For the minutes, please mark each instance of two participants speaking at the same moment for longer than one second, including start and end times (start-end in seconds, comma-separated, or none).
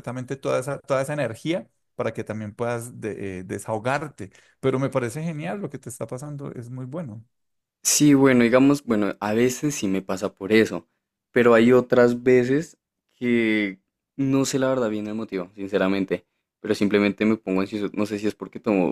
none